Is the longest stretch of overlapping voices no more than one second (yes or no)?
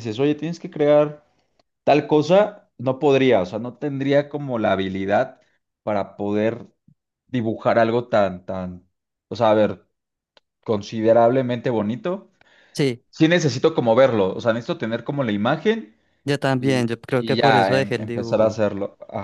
no